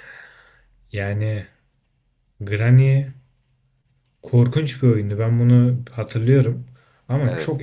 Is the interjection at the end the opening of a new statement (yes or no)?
no